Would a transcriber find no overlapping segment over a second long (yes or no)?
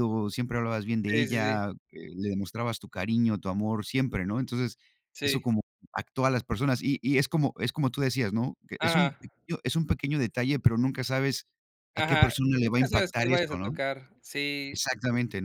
no